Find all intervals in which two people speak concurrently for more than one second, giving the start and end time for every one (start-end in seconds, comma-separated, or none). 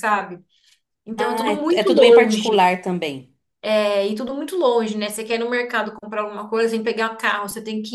1.2-2.7